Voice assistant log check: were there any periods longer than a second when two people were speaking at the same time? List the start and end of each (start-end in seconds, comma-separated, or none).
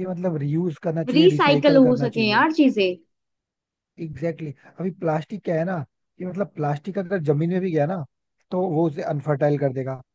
1.1-2.4